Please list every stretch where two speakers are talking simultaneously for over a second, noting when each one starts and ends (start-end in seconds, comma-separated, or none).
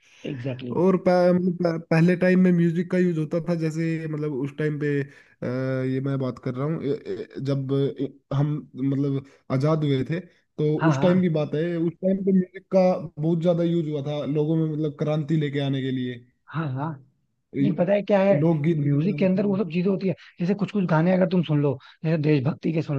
17.6-19.6